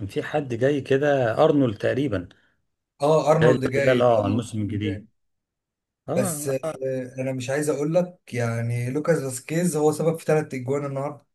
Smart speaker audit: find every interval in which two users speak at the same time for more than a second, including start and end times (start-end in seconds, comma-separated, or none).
3.8-5.0